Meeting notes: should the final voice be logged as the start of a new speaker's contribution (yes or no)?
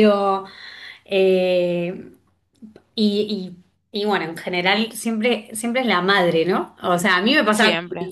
no